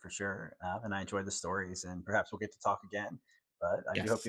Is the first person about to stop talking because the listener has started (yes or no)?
yes